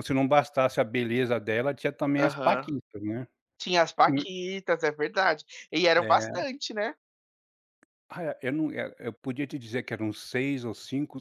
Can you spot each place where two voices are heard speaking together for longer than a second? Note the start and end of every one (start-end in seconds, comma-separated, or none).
none